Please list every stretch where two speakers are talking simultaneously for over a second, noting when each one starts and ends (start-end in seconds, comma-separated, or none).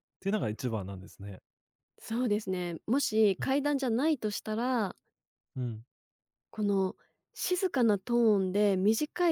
none